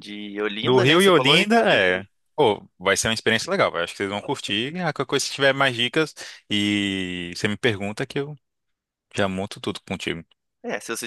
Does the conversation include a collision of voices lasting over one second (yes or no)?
yes